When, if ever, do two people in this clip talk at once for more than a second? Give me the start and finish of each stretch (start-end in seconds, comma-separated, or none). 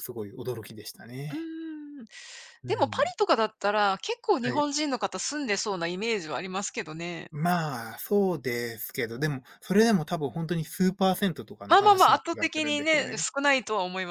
11.7-13.3